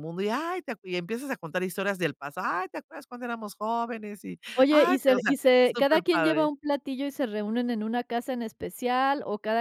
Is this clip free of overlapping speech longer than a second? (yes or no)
no